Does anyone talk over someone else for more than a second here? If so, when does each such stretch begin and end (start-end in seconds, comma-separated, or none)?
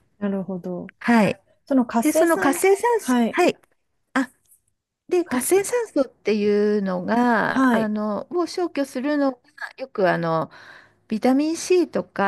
2.0-3.4